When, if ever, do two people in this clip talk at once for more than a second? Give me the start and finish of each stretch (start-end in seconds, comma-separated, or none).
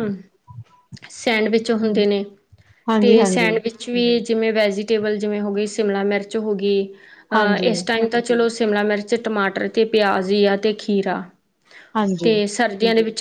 none